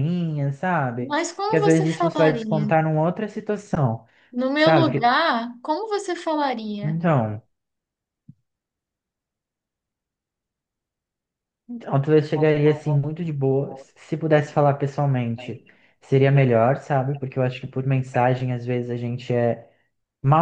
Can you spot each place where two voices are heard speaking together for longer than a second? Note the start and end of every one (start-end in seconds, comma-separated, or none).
1.0-2.7